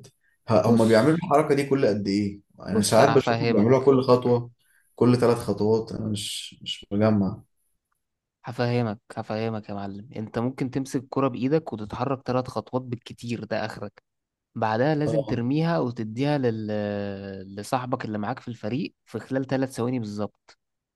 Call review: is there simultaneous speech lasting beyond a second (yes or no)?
yes